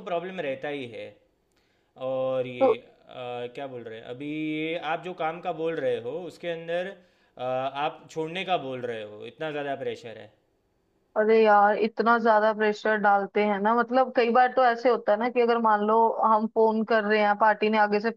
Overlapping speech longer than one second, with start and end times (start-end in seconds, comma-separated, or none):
none